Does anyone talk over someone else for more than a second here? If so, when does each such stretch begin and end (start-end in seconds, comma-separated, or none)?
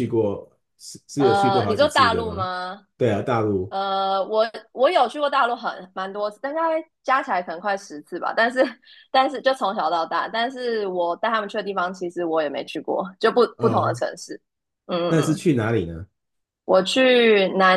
1.2-2.5